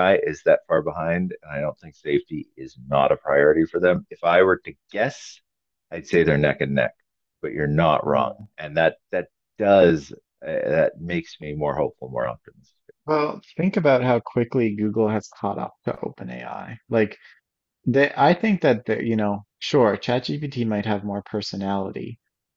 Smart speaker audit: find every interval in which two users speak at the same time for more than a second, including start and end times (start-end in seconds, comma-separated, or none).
none